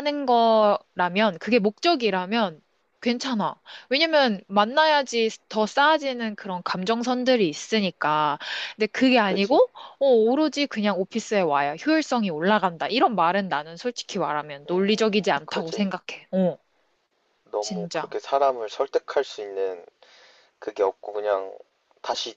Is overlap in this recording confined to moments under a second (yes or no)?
no